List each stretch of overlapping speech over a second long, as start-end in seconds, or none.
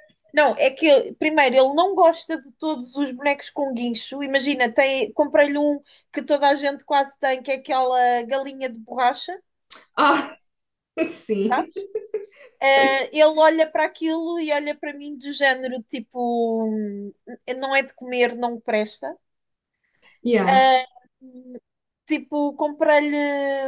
none